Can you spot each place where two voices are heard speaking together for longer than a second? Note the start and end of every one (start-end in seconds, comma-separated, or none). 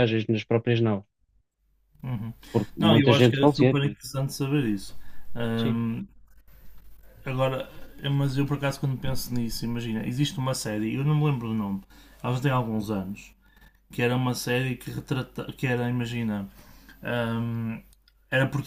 2.8-4.0